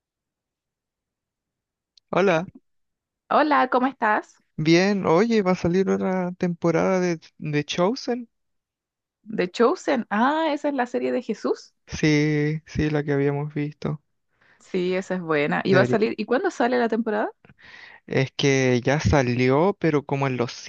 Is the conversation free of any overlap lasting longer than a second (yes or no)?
yes